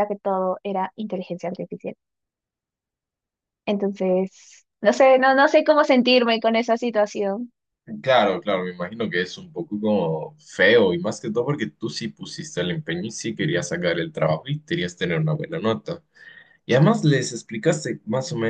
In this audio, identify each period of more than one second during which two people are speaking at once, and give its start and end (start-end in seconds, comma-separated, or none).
none